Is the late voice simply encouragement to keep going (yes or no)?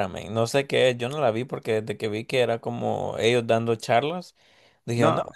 yes